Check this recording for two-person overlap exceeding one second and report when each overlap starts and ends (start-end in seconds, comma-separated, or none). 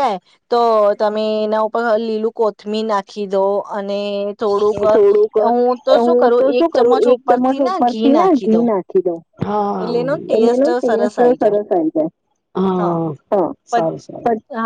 6.4-8.7, 9.8-11.6